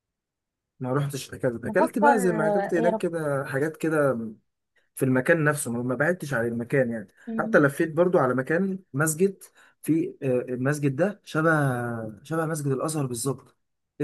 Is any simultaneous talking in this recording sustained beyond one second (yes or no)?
yes